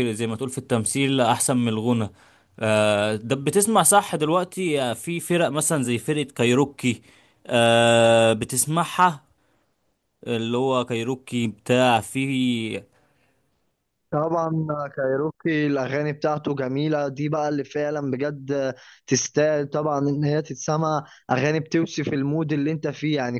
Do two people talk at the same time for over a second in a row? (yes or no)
no